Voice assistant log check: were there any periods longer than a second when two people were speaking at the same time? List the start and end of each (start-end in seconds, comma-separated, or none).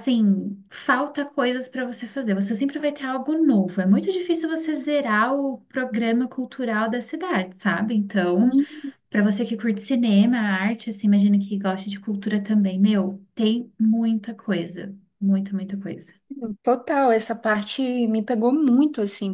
none